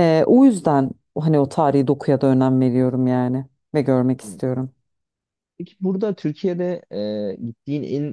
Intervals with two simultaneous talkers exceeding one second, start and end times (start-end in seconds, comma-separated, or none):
none